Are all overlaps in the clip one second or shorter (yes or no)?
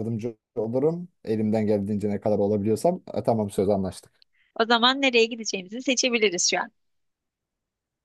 yes